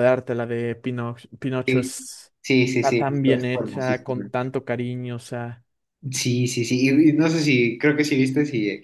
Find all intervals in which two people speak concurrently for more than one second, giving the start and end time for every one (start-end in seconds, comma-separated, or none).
2.8-4.3